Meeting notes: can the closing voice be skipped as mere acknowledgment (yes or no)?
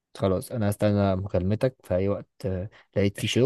yes